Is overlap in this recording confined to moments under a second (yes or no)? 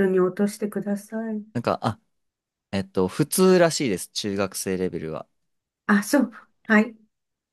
yes